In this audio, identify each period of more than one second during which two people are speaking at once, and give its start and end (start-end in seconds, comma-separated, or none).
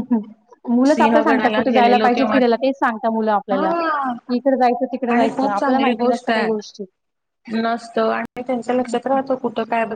0.9-2.6, 5.1-6.5